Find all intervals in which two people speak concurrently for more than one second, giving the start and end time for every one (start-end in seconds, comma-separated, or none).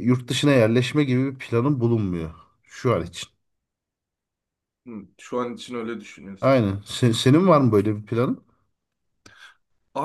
none